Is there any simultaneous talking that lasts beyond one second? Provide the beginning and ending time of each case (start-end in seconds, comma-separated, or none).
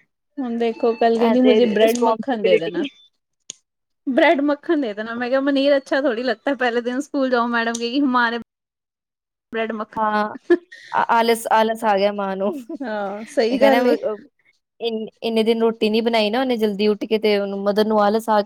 1.4-2.8